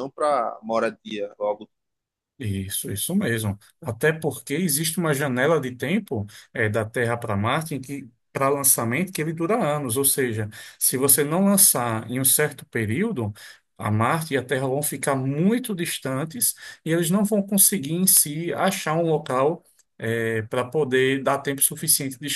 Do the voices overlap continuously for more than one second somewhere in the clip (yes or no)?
no